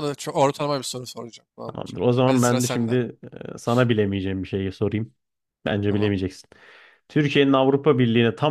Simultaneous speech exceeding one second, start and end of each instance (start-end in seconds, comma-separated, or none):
1.6-3.0